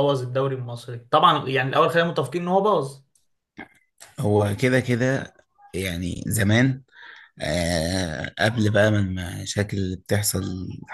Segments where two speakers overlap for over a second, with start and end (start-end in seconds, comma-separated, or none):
none